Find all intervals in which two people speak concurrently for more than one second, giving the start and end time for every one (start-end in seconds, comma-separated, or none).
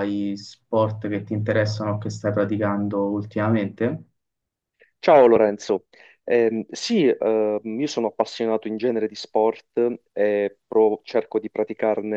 none